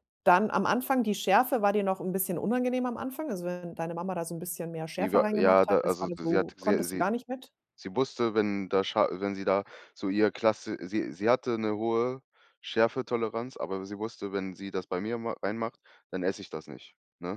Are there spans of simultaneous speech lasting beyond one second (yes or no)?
yes